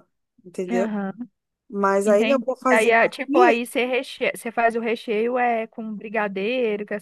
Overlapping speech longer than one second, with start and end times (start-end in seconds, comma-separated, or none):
2.0-3.6